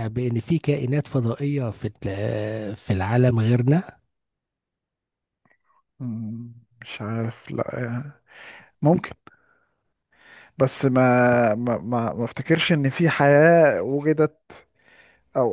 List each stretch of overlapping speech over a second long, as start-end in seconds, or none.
none